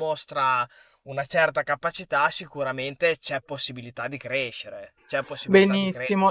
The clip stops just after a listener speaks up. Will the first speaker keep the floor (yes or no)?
no